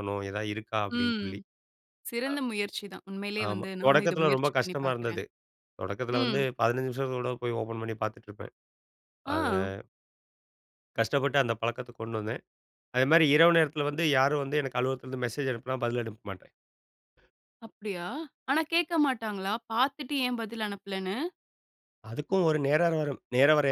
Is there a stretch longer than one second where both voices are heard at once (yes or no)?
yes